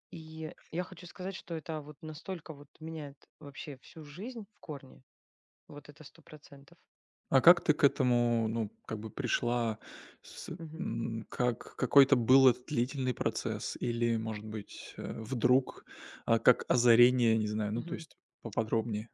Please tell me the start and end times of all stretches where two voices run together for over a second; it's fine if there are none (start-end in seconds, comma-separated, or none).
none